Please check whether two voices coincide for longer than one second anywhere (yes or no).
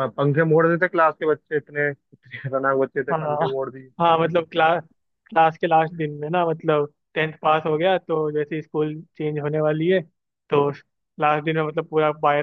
no